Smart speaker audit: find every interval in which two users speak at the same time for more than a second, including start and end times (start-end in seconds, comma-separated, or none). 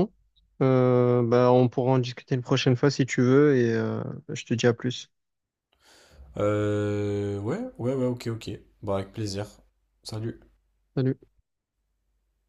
none